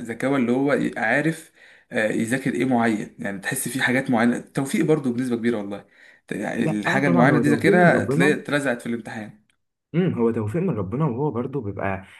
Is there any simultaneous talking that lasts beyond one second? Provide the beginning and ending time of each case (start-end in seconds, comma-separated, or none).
6.6-8.4